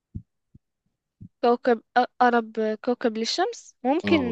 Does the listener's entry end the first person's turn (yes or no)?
yes